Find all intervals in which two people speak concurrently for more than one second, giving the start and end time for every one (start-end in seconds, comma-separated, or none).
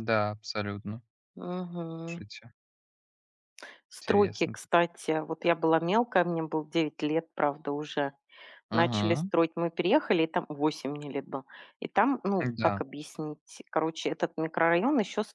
none